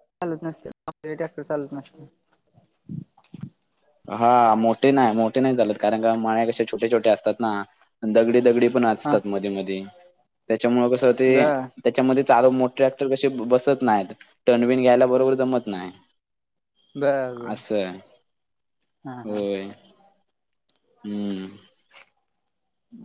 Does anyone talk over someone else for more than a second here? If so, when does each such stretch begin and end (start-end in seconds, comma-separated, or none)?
none